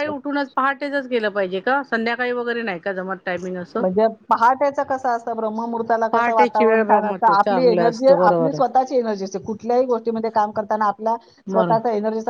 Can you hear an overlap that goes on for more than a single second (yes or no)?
yes